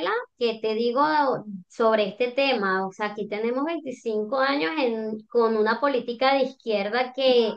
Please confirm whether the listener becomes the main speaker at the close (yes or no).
no